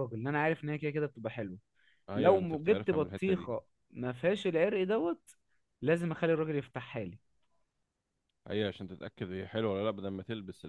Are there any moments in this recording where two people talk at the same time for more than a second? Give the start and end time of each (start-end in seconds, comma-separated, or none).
2.1-3.5